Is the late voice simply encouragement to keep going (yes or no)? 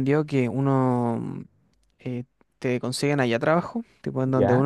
yes